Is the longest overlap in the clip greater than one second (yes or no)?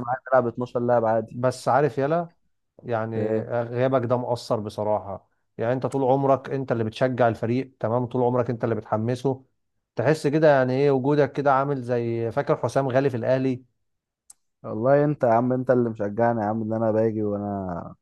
no